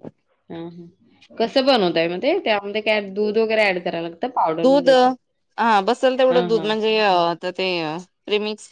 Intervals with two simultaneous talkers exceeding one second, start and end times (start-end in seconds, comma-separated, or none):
none